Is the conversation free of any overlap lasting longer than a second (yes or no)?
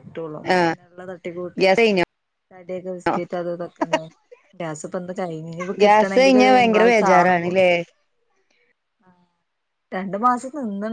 no